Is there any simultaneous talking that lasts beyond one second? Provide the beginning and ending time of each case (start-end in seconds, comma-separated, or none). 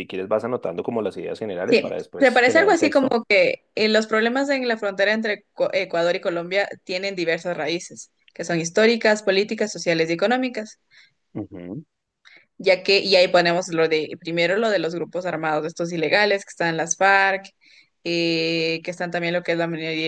1.6-3.2